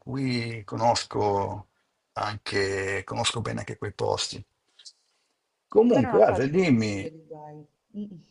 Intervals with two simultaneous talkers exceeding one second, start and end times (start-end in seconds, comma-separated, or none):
5.8-7.1